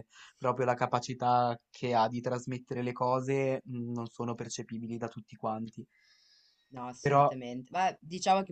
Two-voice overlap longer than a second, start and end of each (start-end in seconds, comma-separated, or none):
none